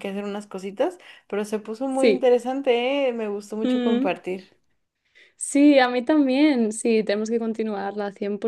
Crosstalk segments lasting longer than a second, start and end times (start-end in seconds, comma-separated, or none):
none